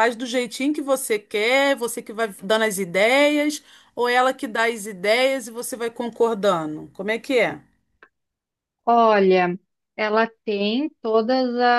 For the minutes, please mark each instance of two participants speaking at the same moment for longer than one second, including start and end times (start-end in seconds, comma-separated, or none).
none